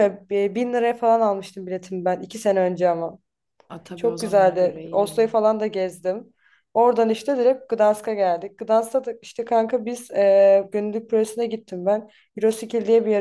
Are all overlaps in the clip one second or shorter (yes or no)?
no